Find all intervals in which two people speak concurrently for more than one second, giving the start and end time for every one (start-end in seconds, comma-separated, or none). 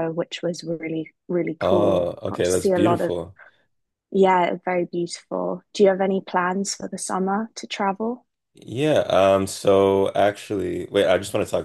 1.6-3.1